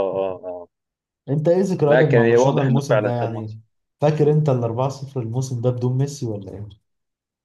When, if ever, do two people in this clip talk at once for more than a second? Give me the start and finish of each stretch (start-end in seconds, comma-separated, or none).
1.9-3.6